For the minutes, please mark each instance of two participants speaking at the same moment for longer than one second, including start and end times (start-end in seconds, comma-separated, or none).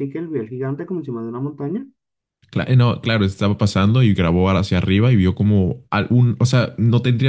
none